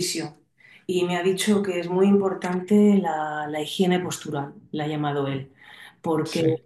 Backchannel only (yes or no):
yes